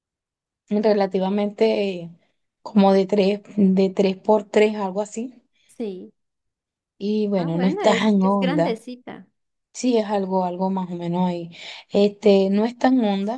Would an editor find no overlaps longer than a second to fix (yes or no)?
no